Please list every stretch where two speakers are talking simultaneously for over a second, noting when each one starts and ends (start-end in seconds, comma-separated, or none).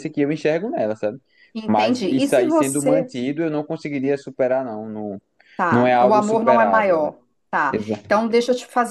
1.7-3.1, 5.7-7.1